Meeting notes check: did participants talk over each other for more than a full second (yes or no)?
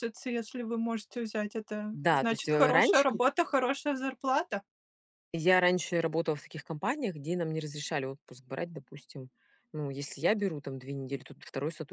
yes